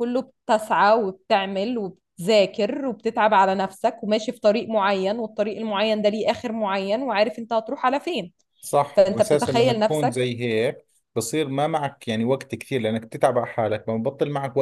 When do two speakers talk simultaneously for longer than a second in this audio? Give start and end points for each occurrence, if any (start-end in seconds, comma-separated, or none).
9.0-10.2